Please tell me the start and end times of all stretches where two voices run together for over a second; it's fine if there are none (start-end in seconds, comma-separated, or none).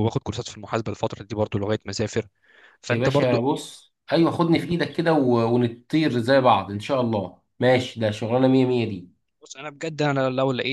none